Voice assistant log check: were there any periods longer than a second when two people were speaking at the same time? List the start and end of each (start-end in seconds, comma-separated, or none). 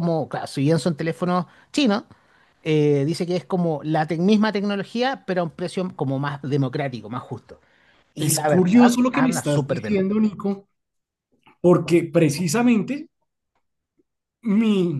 8.2-10.0